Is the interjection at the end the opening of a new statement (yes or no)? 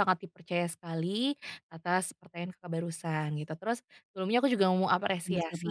no